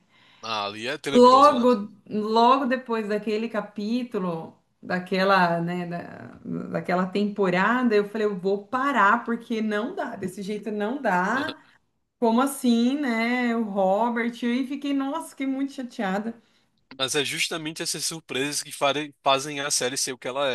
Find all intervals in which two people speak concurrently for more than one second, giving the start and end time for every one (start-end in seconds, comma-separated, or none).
none